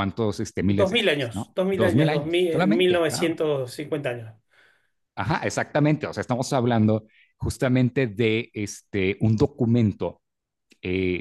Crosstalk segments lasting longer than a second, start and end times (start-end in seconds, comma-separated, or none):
0.7-3.4